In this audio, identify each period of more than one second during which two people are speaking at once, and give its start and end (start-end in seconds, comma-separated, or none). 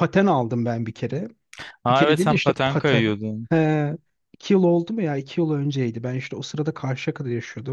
1.9-3.5